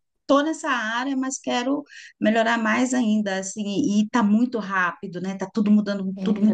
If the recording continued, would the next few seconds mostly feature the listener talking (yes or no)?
yes